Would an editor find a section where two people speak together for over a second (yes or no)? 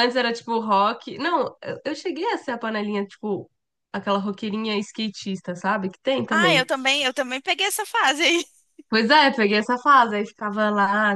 no